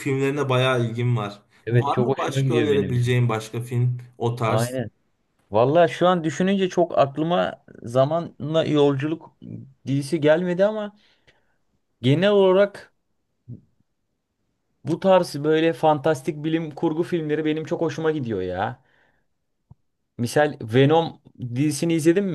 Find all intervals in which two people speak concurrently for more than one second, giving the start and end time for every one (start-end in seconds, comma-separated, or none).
1.7-3.2